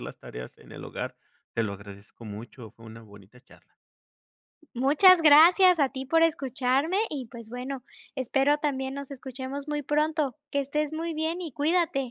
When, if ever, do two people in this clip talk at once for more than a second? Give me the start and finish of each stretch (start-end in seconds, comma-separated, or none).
none